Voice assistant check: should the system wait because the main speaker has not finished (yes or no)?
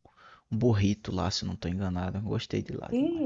no